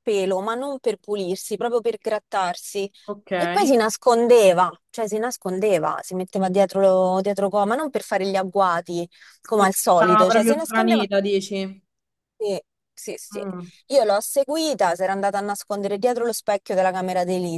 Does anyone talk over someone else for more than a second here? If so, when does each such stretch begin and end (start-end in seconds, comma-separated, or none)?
9.5-11.1